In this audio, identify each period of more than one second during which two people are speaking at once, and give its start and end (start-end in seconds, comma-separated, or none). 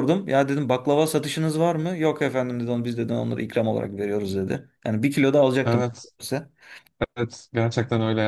none